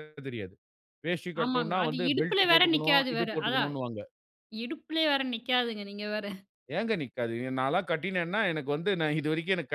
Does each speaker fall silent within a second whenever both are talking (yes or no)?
no